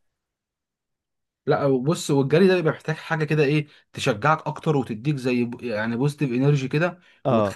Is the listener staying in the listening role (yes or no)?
yes